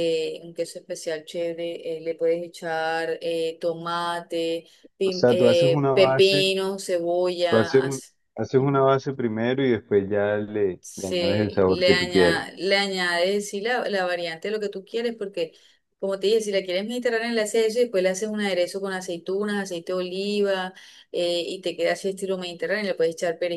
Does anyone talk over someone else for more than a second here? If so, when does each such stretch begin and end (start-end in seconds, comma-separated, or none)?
5.0-6.4, 10.8-12.4